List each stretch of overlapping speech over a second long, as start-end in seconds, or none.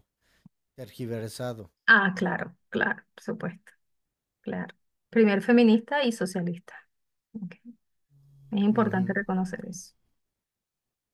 none